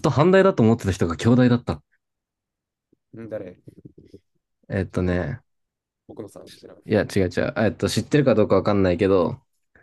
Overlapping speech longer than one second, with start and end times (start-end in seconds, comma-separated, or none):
none